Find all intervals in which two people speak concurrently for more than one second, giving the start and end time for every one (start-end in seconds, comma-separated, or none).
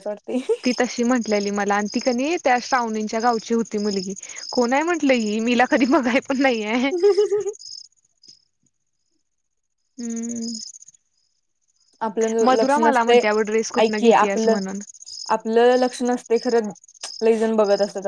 12.4-14.6